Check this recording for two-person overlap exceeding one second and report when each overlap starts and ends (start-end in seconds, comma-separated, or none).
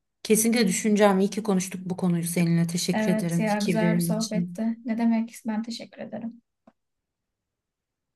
2.9-4.6